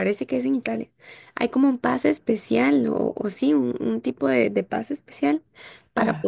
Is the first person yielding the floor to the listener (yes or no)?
no